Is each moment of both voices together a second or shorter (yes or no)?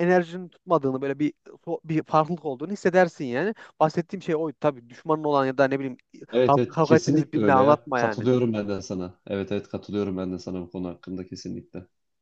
no